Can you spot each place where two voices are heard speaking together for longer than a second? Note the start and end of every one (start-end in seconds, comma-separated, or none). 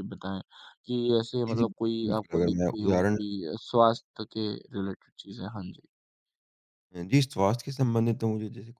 1.5-3.2